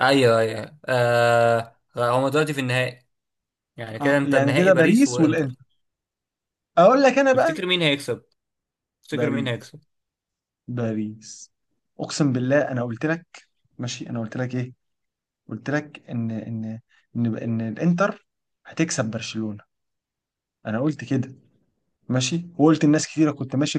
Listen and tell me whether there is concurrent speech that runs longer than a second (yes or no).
yes